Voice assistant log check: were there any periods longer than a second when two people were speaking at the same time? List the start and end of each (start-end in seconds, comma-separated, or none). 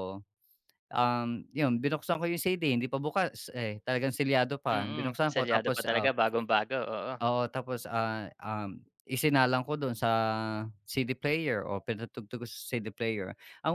4.7-6.1